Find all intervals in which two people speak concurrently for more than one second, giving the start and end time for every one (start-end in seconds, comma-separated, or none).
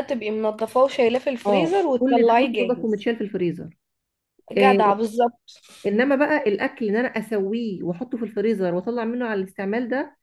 1.4-3.1